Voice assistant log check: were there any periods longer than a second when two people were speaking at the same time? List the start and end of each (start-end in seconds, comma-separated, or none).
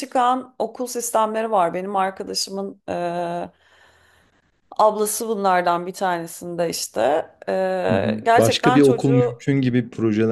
7.9-9.4